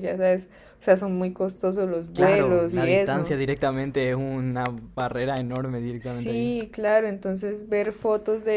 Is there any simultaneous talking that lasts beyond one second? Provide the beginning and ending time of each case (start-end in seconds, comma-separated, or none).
2.1-3.4